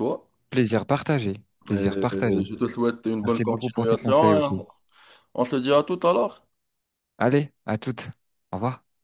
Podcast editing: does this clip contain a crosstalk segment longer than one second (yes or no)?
yes